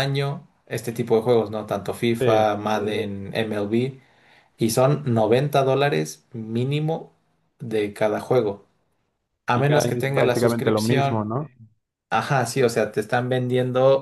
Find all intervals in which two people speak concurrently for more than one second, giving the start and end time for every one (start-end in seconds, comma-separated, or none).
9.5-11.3